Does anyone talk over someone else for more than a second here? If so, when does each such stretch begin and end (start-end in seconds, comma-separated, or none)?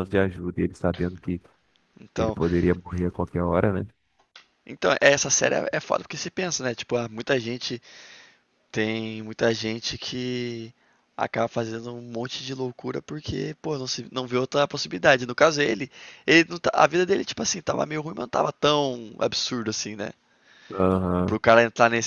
none